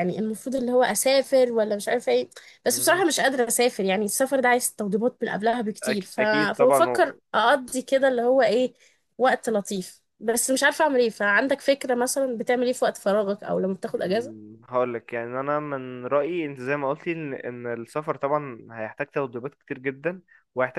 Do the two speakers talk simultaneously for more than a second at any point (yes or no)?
yes